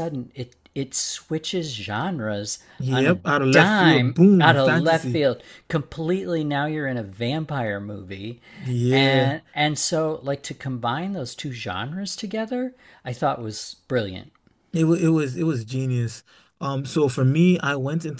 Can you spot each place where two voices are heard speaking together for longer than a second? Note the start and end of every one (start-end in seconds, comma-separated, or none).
2.8-5.2